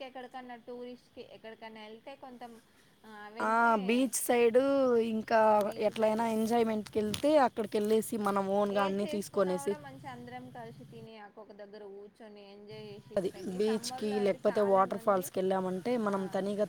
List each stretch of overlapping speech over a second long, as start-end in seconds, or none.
13.2-15.2